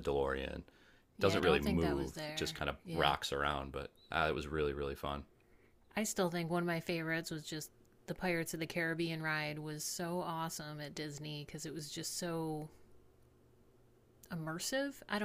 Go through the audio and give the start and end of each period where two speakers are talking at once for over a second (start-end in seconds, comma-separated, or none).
1.2-3.1